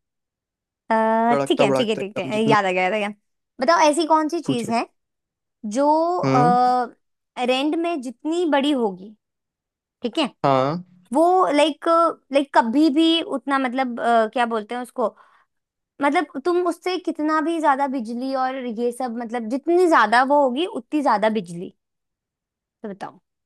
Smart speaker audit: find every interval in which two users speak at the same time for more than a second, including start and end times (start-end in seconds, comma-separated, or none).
1.3-2.5